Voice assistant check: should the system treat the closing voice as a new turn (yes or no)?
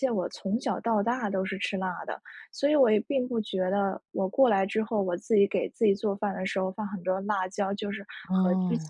no